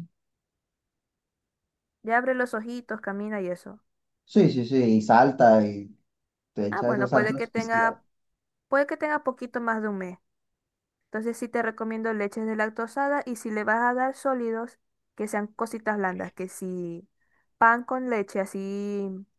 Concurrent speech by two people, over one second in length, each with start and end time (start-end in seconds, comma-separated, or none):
6.7-8.0